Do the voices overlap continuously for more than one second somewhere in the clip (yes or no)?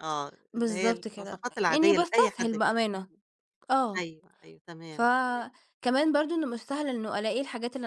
yes